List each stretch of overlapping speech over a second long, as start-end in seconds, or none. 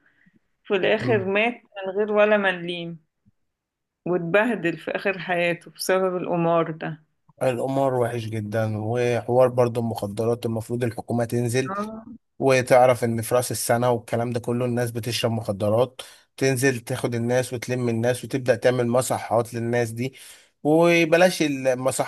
none